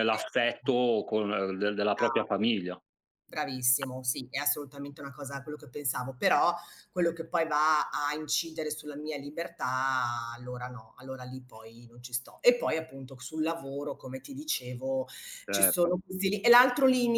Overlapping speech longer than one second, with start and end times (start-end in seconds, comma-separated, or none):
none